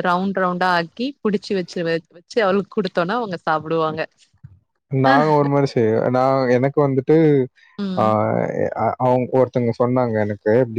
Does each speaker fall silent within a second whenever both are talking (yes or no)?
yes